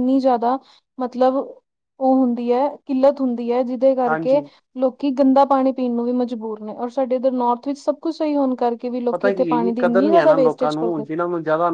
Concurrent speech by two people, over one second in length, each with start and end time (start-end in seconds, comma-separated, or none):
9.1-11.0